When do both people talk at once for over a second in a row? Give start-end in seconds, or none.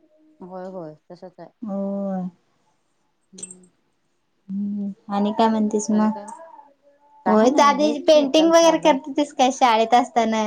7.3-9.0